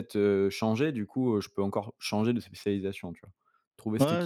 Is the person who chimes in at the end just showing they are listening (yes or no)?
no